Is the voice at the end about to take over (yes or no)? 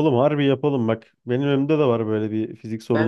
yes